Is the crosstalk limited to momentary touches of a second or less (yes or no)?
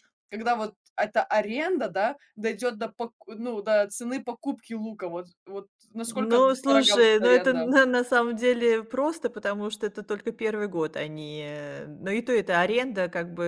no